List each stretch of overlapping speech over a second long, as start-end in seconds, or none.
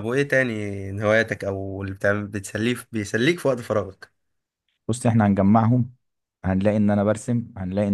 none